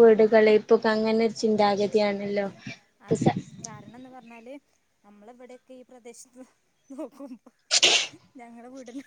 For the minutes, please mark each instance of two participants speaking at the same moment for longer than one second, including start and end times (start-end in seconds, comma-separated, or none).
none